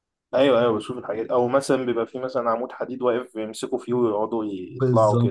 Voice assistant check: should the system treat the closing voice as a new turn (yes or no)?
yes